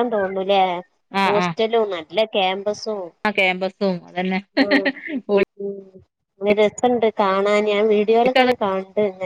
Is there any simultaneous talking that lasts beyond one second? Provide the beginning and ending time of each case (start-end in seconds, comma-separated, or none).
none